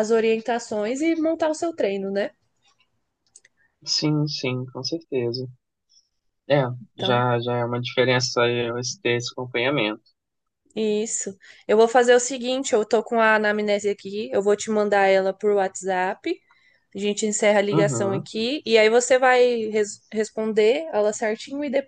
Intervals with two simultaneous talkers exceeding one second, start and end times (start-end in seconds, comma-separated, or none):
none